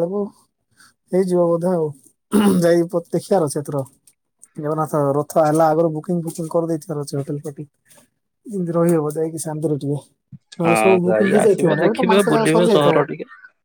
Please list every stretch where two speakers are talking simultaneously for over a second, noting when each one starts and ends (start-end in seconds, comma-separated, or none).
10.7-13.0